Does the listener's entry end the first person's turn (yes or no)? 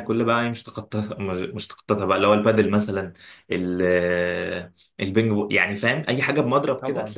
no